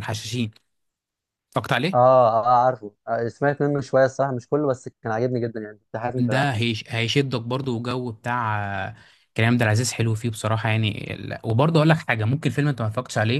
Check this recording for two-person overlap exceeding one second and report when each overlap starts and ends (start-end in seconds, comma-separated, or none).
none